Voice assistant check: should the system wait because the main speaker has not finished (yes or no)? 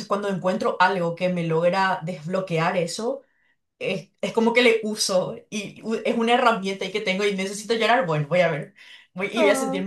yes